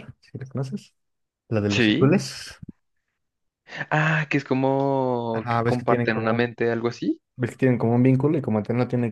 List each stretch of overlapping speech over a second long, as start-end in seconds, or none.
5.3-6.5